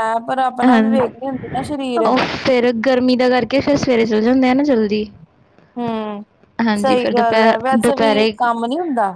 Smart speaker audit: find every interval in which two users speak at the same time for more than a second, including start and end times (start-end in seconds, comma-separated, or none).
6.8-8.3